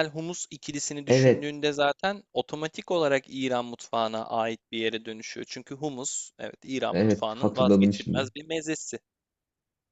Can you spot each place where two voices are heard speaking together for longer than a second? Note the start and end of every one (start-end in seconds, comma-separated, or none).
6.9-8.3